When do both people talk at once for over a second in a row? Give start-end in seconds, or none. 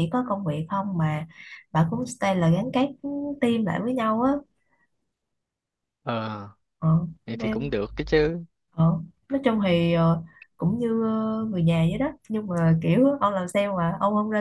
none